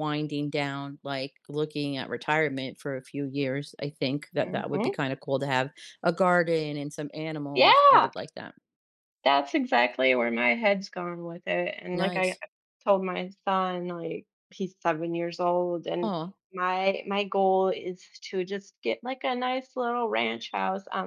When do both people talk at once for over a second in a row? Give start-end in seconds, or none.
none